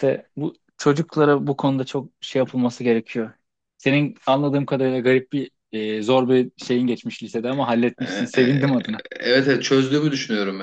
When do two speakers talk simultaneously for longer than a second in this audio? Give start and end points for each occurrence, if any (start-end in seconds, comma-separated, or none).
none